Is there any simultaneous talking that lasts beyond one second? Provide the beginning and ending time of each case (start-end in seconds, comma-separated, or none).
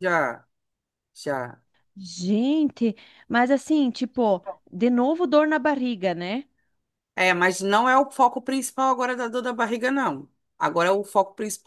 none